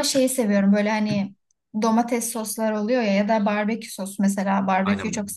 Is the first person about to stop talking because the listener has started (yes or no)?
yes